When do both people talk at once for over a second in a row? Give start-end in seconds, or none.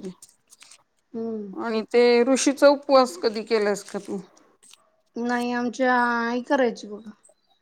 none